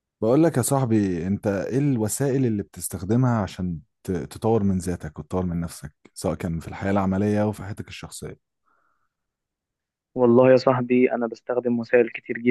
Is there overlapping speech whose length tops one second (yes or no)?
no